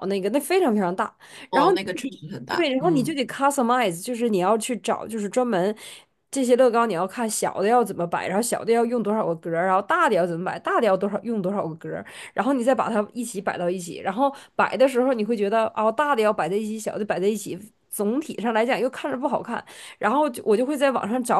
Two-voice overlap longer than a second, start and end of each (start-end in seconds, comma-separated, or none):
1.5-3.2